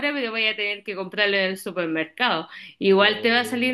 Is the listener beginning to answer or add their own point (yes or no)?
no